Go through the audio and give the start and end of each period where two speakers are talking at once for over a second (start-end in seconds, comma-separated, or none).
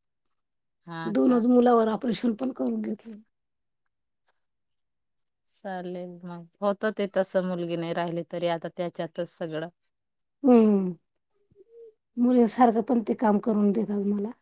none